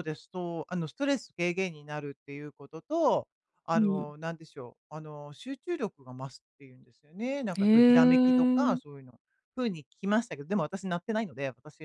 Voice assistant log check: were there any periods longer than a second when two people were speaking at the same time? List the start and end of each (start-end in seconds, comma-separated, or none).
7.6-8.8